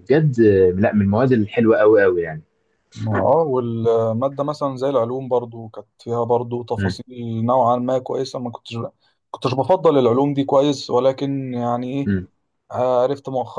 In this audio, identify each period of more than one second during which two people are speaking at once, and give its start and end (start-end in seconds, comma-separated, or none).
none